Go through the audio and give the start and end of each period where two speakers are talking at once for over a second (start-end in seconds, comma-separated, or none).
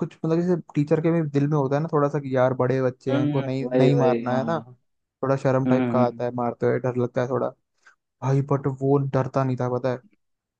3.1-4.6